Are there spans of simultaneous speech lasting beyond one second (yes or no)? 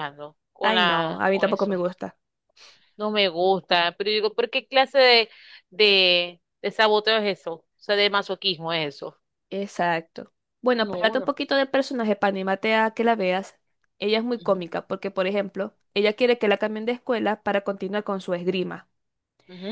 yes